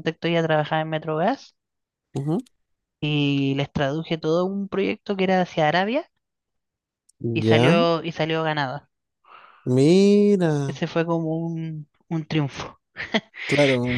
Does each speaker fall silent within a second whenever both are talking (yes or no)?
yes